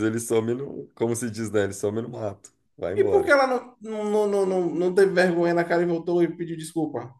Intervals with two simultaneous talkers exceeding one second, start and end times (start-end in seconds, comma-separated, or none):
none